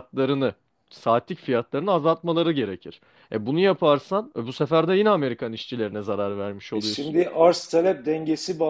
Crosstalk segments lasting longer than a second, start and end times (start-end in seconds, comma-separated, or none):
none